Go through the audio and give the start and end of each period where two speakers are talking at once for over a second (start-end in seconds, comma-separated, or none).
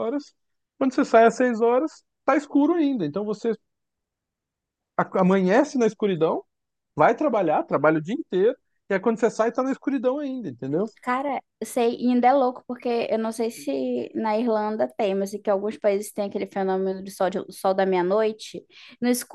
none